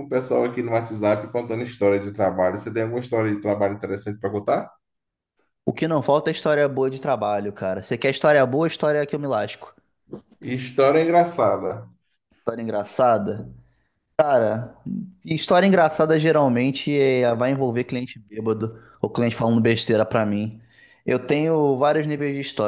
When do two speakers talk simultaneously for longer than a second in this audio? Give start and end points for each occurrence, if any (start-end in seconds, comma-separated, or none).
none